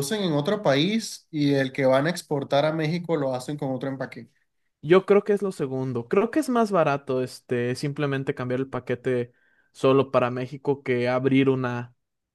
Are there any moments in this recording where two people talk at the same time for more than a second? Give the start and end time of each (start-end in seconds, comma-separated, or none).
none